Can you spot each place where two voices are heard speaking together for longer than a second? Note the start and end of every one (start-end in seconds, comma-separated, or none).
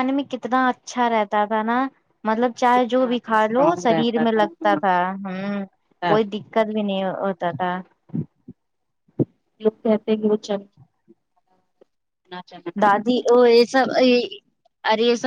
3.0-4.8